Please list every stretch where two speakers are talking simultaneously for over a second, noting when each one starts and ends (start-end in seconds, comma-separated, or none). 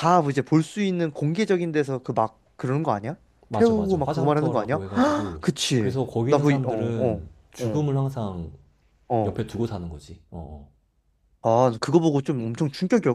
3.5-4.8, 5.4-7.9